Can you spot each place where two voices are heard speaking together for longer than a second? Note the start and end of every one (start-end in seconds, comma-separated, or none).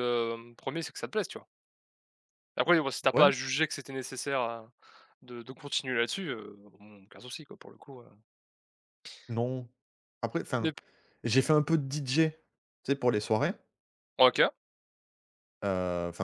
none